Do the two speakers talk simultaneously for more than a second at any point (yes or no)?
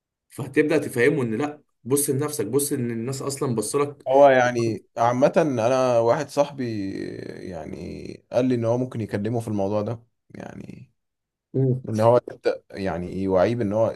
no